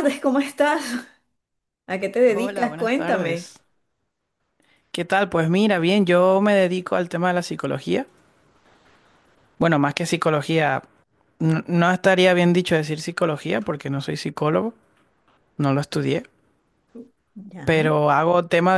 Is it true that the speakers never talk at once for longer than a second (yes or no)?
no